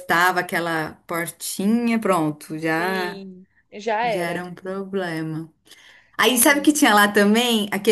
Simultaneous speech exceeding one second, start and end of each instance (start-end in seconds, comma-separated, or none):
none